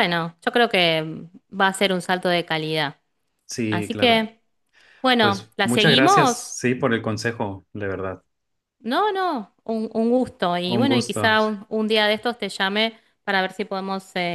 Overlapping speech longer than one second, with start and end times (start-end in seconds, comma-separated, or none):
5.2-6.6